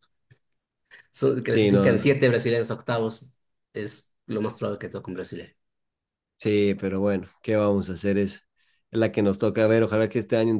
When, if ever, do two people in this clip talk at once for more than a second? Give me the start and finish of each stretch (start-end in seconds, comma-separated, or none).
none